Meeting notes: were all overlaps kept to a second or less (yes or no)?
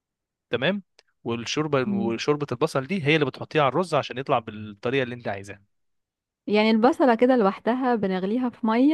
yes